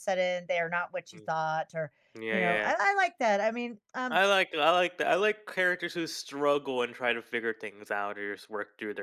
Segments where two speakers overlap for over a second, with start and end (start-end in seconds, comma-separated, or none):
none